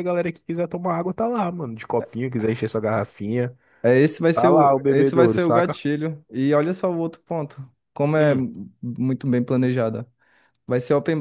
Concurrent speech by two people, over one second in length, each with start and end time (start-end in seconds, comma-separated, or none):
4.3-5.8